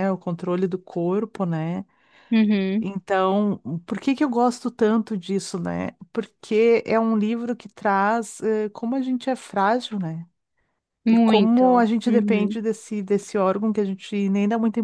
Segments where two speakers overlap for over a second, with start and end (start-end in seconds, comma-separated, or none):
11.1-12.6